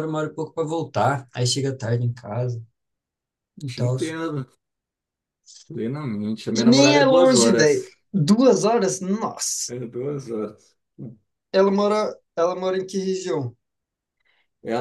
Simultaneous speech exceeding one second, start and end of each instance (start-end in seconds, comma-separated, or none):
6.5-7.8